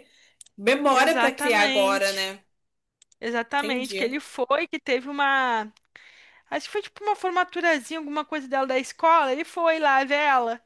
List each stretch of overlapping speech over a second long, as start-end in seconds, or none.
0.9-2.3